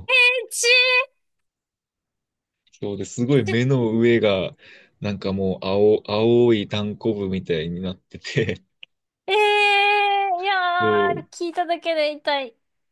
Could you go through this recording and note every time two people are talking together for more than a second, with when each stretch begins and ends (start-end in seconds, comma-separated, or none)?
none